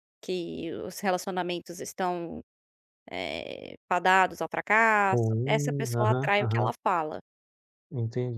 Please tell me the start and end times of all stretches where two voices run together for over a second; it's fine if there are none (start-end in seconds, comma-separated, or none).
5.1-6.7